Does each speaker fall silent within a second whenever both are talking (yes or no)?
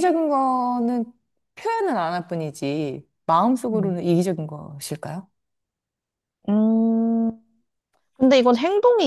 yes